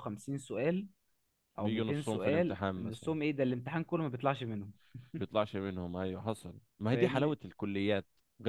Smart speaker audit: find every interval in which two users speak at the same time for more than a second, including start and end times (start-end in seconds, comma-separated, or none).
1.6-3.1